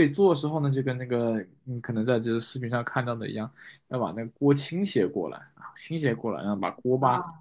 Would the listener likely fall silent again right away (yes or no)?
yes